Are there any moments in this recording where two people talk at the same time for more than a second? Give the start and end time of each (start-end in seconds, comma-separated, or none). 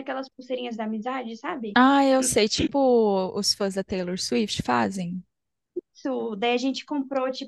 none